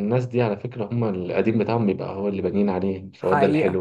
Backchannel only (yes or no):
no